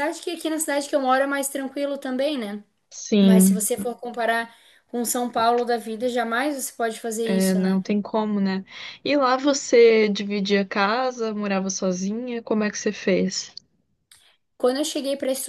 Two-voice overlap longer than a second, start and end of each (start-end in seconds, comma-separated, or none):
none